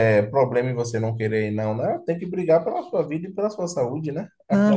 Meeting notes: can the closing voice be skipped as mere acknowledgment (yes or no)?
no